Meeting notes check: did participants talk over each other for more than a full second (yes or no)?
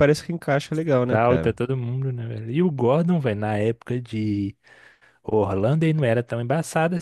no